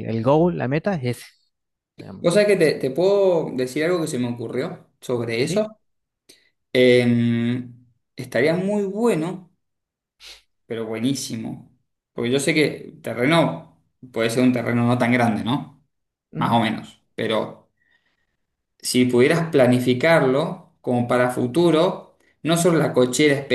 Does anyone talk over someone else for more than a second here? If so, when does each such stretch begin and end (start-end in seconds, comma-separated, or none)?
none